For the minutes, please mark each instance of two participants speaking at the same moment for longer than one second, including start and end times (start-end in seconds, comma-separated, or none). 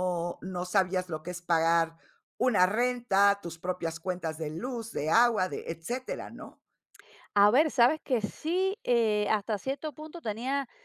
none